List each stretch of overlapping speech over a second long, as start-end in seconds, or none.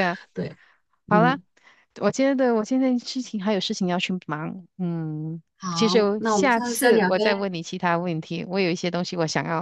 5.6-7.5